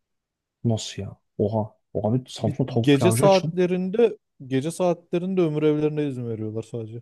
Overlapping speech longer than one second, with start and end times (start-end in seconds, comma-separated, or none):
2.4-3.6